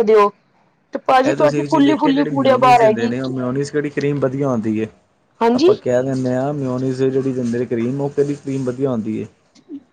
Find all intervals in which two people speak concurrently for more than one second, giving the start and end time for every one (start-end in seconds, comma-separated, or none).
1.3-3.1